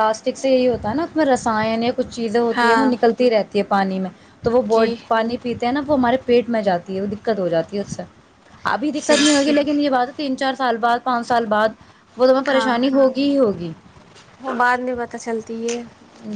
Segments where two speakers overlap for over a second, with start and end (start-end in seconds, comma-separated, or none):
none